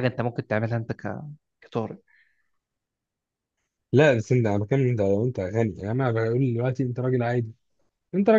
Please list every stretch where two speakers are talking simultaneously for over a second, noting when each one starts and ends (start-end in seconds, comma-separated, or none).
none